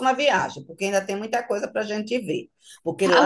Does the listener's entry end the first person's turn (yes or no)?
no